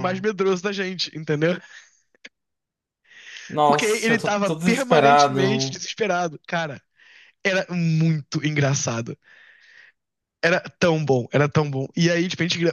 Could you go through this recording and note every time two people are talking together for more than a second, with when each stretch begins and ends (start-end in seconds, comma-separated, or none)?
3.6-5.8